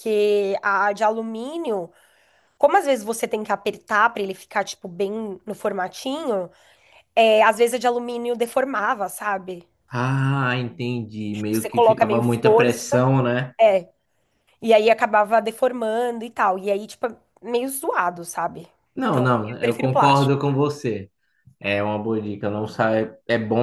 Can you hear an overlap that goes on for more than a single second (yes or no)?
yes